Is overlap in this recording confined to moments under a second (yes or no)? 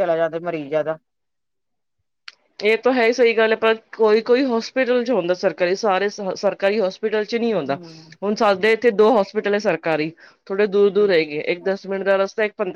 yes